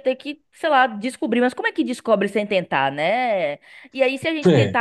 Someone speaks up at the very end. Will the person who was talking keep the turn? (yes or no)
yes